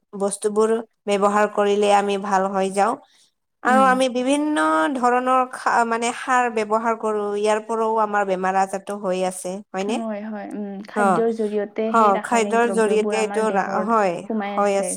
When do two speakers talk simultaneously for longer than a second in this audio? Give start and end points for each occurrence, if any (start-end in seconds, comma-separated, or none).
11.0-13.4